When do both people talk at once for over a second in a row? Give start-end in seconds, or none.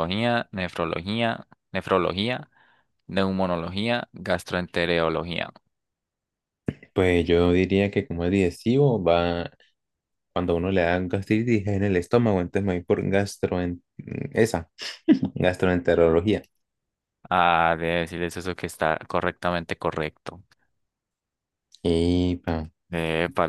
none